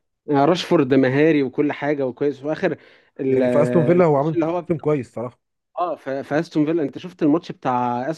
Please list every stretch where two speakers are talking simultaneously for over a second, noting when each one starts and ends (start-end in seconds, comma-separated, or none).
3.3-4.8